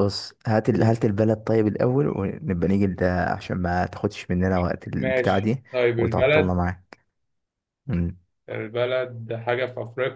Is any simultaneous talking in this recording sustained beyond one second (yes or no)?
yes